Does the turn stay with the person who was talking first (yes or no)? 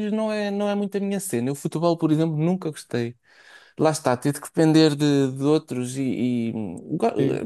yes